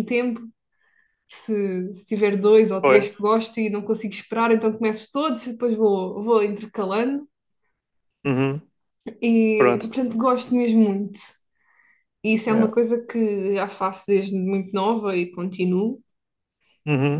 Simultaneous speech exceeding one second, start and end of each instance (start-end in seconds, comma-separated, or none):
none